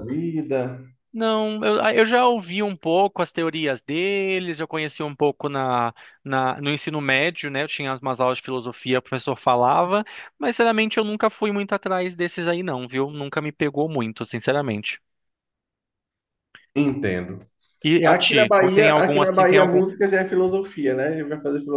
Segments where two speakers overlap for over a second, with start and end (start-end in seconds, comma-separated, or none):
18.0-19.8